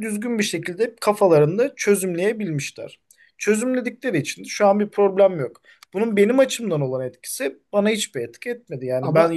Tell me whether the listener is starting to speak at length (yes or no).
no